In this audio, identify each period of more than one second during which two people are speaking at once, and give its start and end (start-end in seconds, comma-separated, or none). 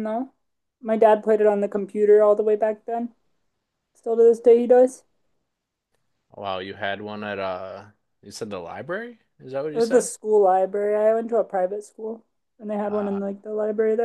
none